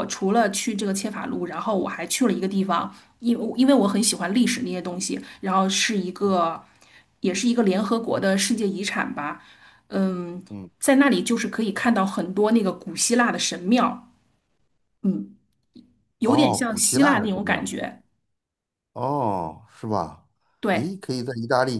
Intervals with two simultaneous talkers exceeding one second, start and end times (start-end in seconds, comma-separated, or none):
16.2-17.7